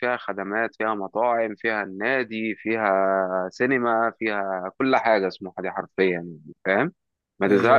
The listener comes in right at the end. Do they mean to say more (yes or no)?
no